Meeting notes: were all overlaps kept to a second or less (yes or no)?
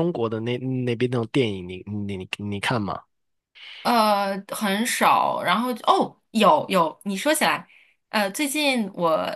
yes